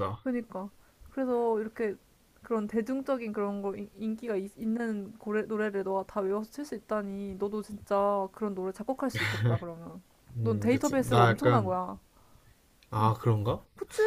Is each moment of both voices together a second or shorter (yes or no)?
no